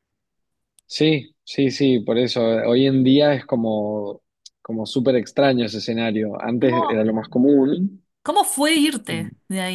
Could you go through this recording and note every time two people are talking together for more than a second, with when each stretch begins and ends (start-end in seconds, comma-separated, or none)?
none